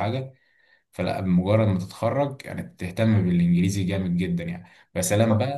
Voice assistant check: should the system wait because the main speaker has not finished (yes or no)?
yes